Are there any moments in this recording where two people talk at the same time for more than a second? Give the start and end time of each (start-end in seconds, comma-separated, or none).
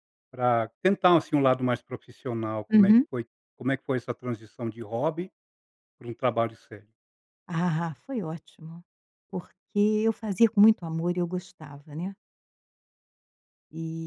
none